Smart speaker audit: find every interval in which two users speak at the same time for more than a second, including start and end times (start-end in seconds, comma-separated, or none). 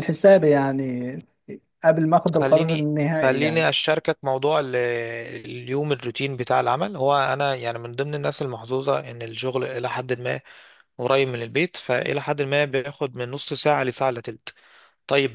2.3-3.7